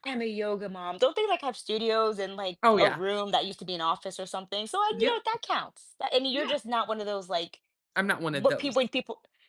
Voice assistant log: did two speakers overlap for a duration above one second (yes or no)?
no